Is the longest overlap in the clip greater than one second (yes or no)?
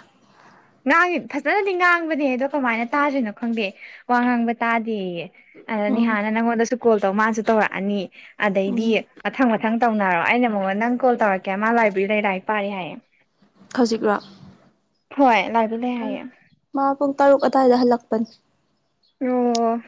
no